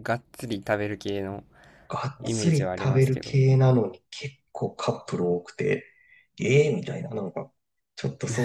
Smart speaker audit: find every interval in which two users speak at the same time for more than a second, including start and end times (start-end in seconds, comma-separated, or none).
2.2-3.4